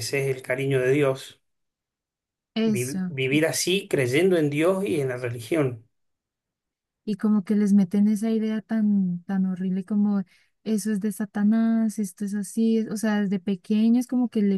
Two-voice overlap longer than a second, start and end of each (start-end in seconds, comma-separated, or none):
none